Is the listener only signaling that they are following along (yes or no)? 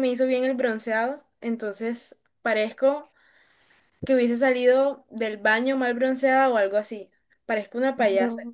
no